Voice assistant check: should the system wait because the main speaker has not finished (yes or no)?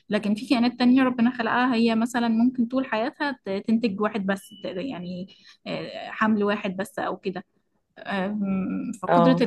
yes